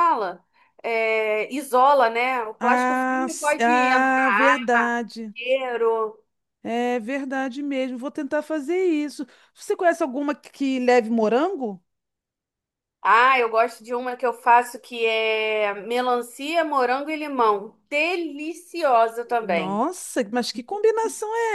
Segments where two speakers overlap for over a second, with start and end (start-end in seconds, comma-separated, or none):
2.6-4.6